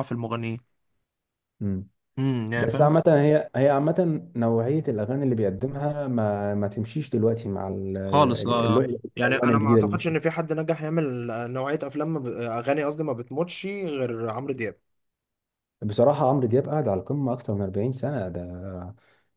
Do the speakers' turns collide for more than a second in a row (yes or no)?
yes